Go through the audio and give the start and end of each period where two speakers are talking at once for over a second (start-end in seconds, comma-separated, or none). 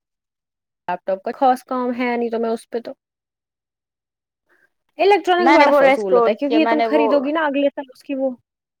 5.4-7.1